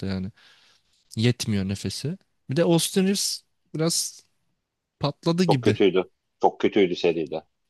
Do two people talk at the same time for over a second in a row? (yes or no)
no